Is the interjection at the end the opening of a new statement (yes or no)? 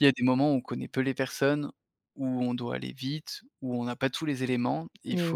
no